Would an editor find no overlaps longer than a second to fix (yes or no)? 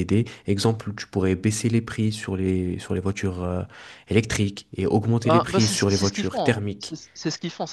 no